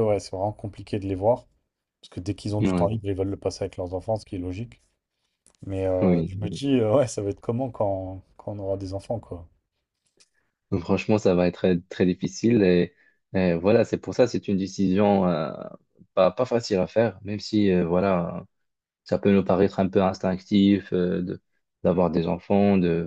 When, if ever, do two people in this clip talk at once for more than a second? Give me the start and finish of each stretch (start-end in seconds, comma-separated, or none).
none